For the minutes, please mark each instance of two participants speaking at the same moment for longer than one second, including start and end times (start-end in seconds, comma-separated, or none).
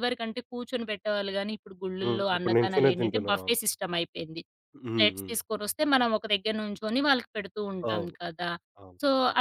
2.0-3.5